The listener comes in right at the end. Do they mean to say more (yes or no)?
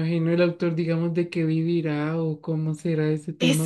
yes